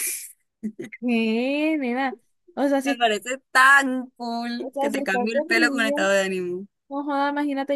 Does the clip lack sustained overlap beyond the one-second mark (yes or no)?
no